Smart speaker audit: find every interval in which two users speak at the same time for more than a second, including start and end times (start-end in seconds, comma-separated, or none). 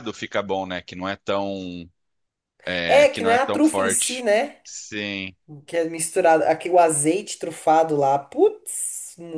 2.9-4.3